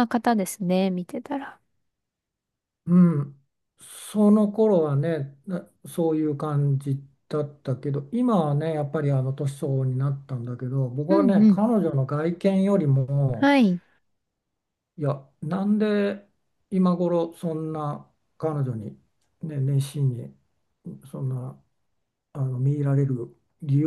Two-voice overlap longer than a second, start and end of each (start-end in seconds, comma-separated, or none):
none